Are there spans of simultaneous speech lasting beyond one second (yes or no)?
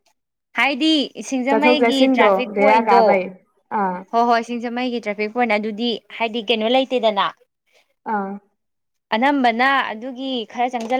yes